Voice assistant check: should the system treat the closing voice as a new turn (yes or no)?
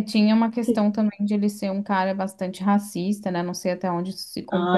yes